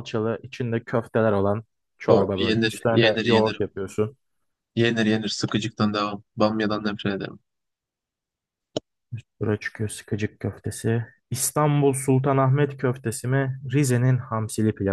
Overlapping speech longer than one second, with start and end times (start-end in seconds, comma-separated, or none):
2.1-3.6